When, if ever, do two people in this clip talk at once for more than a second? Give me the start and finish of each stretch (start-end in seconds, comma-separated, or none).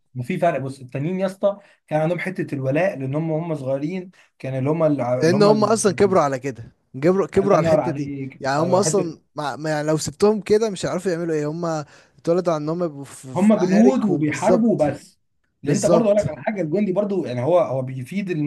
7.4-9.2, 13.3-14.8